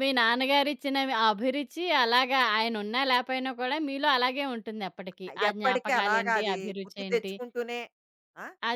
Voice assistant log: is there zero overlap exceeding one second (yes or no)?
no